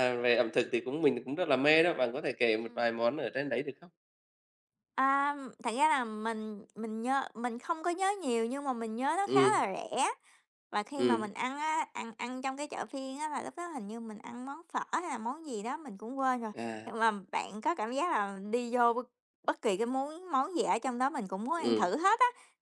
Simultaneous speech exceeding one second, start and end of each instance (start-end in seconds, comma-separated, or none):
none